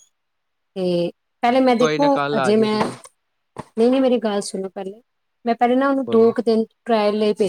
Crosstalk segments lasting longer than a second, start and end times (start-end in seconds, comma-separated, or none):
1.5-3.0